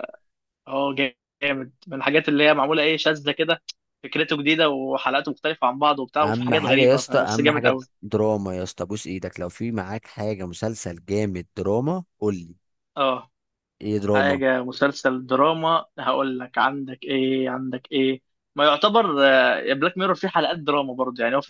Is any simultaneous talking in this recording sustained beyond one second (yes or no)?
yes